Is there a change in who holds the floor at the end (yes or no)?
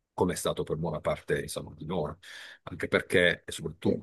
no